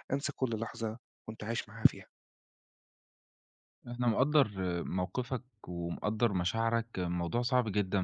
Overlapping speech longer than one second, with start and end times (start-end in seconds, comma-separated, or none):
none